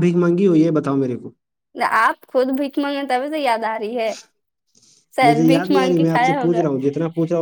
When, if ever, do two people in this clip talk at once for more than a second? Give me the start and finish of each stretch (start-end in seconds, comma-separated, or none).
5.3-6.6